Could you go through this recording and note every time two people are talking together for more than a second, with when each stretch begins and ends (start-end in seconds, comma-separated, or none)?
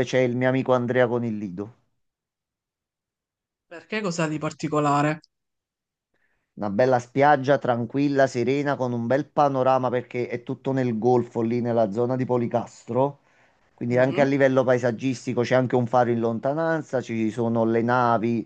none